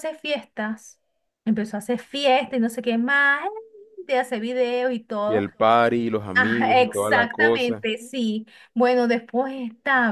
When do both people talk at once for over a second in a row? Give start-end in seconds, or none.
6.3-7.9